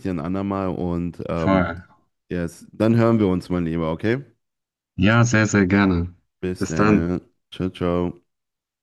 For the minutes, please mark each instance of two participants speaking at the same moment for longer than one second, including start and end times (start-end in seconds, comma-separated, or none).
none